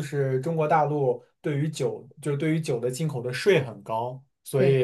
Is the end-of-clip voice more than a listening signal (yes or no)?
no